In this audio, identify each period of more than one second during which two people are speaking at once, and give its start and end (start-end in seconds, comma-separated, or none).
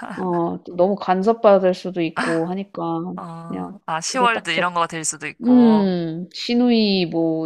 3.5-4.8